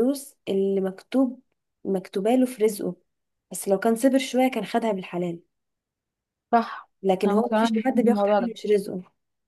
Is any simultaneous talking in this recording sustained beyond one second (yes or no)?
yes